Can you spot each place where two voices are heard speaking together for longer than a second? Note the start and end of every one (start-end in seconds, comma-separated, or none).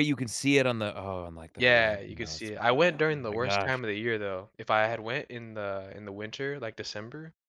1.6-3.8